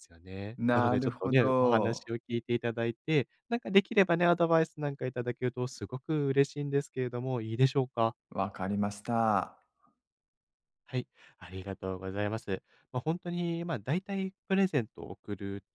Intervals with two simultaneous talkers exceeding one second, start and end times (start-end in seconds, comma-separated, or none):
0.6-2.1